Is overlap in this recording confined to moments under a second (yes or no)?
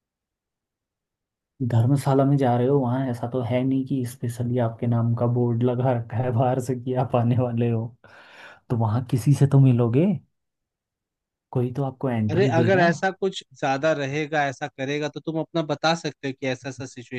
yes